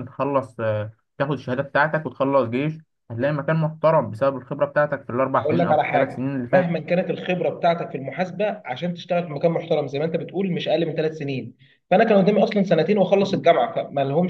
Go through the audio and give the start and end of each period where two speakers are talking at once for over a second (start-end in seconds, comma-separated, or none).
5.3-6.7